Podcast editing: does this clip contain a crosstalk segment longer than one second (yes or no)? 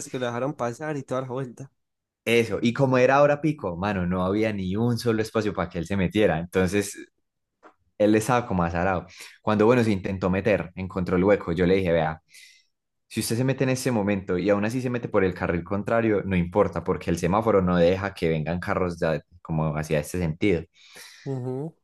no